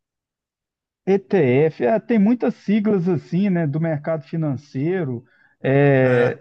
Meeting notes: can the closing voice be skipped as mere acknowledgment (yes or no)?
yes